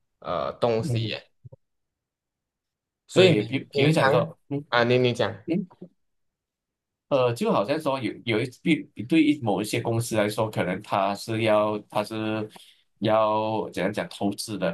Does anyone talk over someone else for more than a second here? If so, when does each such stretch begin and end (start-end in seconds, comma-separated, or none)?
3.1-4.3